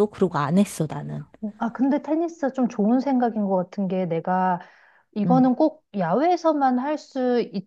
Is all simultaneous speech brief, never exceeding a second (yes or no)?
yes